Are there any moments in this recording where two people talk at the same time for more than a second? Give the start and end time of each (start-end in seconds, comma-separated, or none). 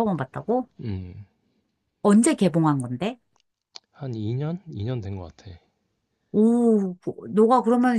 none